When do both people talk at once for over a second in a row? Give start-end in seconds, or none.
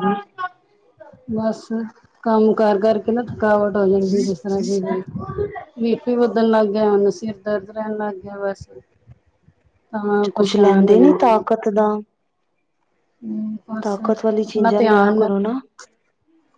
14.2-15.6